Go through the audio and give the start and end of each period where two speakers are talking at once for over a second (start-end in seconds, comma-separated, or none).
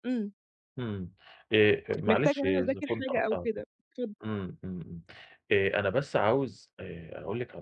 2.1-3.5